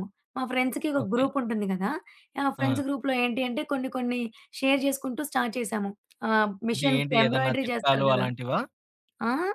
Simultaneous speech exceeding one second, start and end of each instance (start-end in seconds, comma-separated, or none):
6.7-8.3